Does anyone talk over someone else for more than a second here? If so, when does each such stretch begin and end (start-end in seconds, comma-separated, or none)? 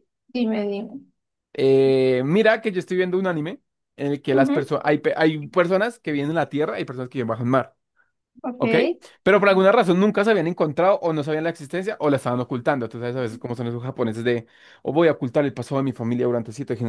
none